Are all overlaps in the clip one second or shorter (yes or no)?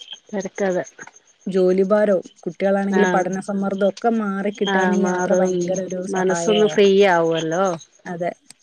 yes